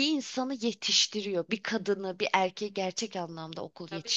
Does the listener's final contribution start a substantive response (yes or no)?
yes